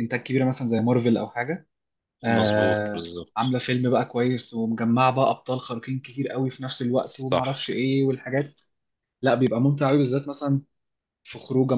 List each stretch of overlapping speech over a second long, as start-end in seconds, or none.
2.3-3.6